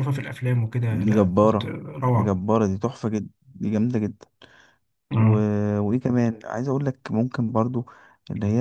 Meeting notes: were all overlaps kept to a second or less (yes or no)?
no